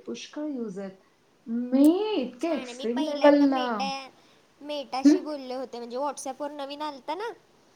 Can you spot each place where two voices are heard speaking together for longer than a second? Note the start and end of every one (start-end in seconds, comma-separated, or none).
2.1-3.6